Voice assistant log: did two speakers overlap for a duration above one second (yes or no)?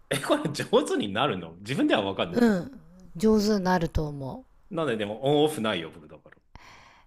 no